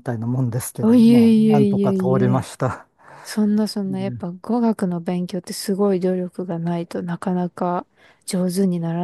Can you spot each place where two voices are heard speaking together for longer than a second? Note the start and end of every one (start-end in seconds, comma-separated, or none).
0.8-2.5